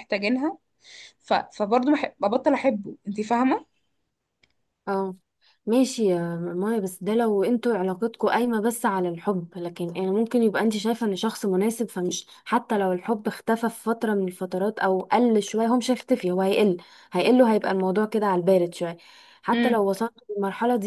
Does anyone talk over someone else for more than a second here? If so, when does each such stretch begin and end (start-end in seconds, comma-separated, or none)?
none